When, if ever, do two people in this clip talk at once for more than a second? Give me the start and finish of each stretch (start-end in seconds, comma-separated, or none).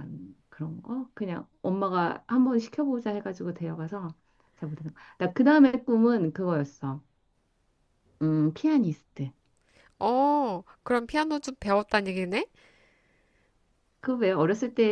none